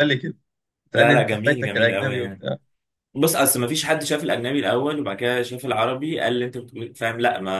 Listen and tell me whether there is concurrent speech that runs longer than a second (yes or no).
yes